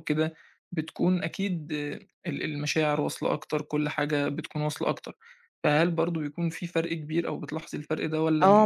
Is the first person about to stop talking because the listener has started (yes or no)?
yes